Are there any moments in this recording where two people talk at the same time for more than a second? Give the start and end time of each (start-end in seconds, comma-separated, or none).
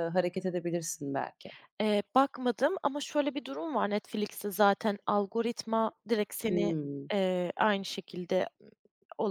none